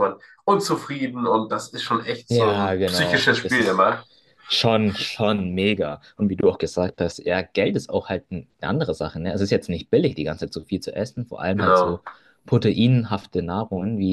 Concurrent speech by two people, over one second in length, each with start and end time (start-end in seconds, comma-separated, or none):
2.3-3.9